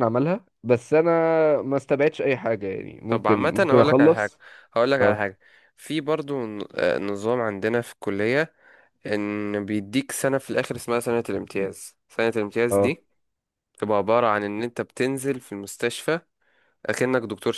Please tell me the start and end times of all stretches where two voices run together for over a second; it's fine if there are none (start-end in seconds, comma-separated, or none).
3.1-4.3